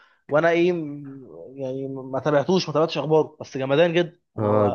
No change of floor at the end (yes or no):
no